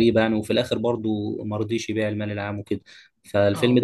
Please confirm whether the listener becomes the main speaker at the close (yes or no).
no